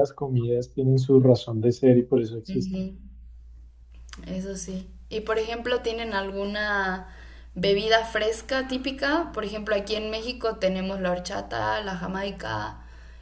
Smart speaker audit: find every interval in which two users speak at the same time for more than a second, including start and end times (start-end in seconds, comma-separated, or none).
none